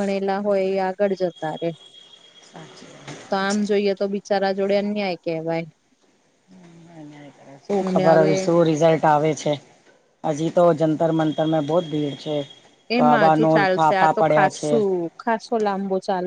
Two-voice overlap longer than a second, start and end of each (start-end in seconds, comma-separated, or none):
13.0-14.7